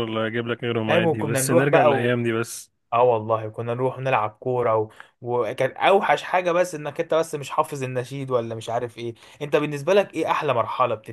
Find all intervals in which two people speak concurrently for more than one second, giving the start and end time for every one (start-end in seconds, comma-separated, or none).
0.8-2.1